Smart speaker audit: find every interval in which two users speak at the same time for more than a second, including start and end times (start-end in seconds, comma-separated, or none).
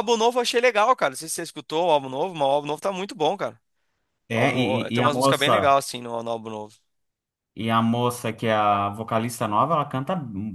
4.3-5.7